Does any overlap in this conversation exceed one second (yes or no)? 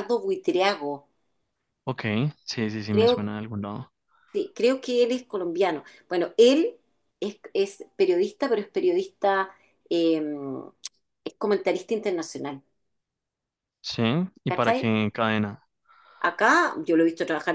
no